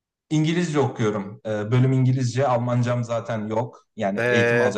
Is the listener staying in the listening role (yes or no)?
no